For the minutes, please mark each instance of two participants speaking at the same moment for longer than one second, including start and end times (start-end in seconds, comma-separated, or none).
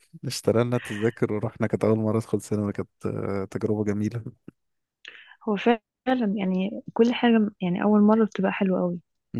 none